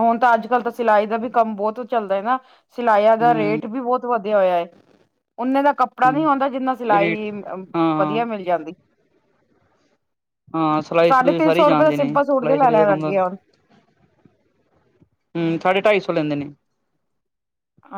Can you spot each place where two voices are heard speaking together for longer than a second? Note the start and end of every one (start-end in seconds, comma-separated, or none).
11.1-13.1